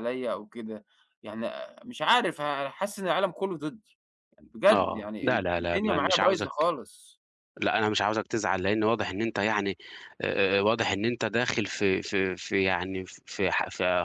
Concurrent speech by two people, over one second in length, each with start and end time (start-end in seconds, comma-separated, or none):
4.7-6.7